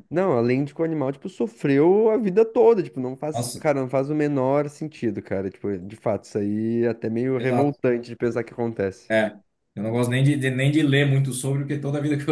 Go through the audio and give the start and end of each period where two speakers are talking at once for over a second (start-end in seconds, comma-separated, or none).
none